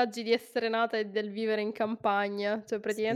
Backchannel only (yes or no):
yes